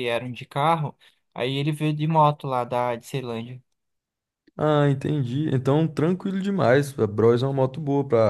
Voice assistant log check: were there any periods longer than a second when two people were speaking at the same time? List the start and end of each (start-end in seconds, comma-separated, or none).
none